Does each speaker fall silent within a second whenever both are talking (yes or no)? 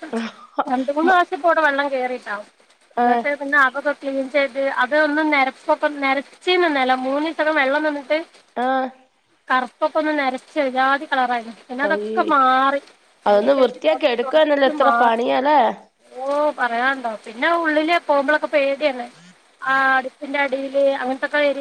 no